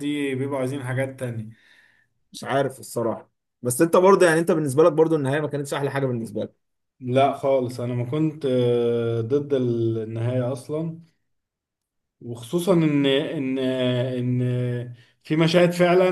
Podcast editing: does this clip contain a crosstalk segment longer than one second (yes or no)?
no